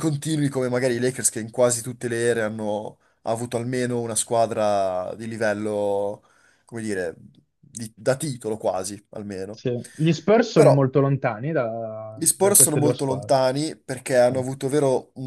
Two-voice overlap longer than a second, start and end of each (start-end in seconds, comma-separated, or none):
12.1-13.3